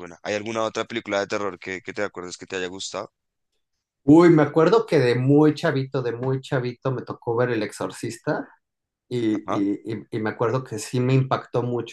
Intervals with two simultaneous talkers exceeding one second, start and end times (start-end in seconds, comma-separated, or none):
none